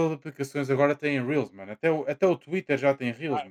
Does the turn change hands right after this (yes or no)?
yes